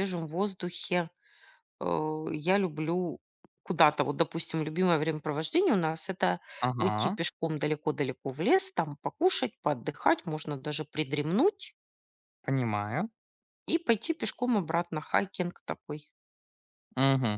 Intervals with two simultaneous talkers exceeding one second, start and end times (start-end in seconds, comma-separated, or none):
none